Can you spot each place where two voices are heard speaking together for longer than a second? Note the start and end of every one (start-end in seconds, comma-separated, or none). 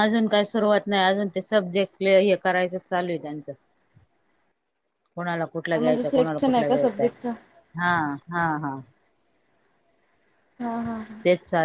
5.8-7.1